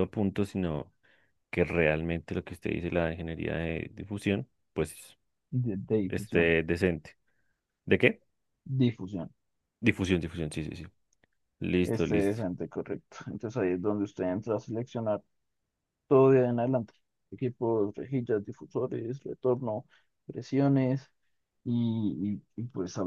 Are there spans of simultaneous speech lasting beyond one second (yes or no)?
no